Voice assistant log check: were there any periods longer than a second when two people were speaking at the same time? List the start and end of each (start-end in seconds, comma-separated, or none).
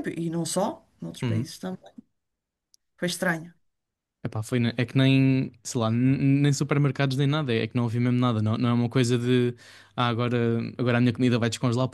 none